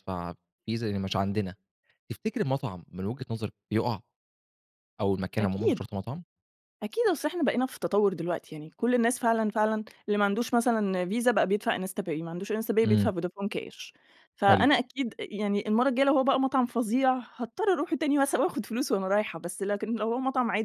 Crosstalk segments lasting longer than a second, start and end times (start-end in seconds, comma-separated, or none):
none